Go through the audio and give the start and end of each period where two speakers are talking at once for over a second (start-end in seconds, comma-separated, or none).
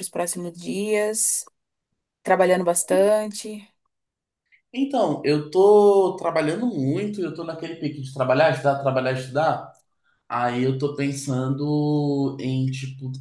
none